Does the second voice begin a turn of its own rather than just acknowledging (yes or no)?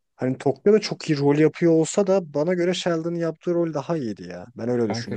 yes